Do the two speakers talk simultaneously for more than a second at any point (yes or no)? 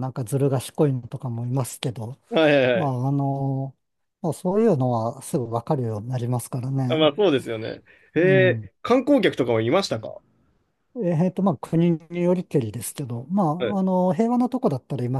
no